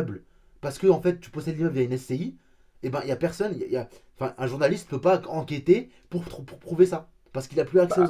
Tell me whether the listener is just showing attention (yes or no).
no